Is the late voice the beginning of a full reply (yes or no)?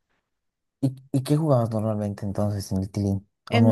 yes